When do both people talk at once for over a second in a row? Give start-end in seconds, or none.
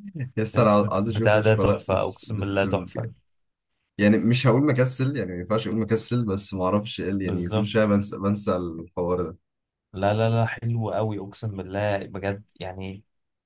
0.5-3.1